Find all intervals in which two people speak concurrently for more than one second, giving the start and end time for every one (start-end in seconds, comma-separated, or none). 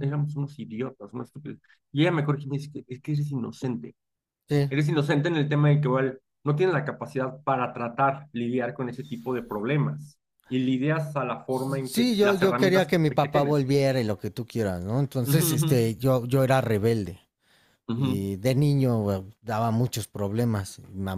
11.8-13.7